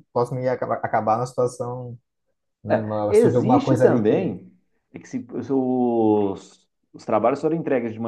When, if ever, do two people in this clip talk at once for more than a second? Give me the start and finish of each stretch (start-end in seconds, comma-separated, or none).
2.7-4.3